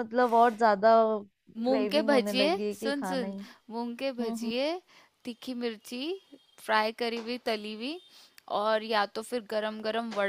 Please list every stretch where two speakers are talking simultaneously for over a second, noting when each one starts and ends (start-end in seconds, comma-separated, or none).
1.7-3.3